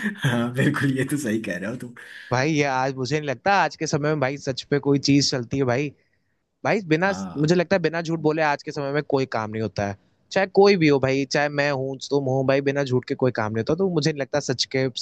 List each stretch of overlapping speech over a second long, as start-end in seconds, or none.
none